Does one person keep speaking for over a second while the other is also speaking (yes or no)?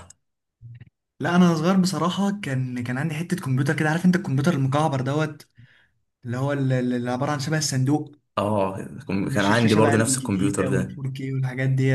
yes